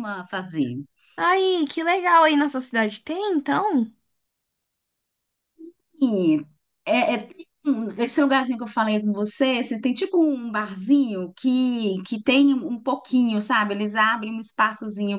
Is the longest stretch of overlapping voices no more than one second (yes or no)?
yes